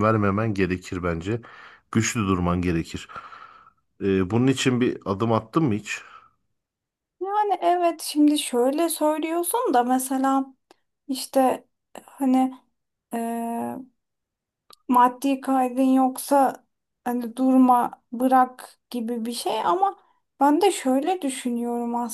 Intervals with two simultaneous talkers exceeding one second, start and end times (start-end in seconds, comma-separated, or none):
none